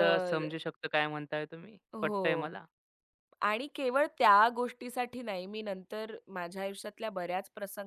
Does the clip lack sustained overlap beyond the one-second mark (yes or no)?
yes